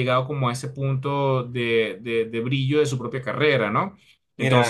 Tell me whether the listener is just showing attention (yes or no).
no